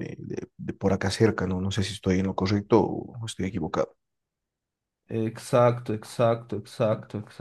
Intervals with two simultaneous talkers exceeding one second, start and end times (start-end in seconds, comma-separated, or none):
none